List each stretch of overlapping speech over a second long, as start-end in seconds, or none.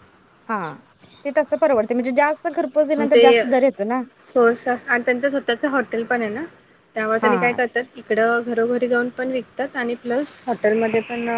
none